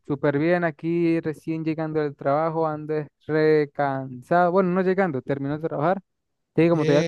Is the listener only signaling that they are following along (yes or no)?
yes